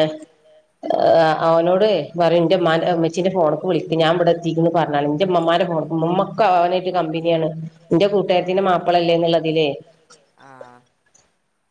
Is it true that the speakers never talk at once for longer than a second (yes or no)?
no